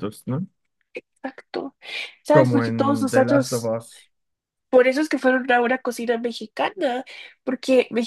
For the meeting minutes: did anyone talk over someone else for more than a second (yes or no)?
yes